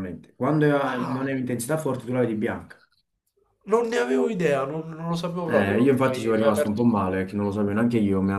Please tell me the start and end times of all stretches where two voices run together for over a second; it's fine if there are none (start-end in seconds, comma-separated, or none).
5.5-7.2